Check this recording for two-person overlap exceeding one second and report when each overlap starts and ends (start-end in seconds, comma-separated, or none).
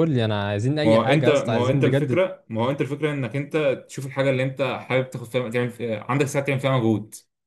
0.8-2.2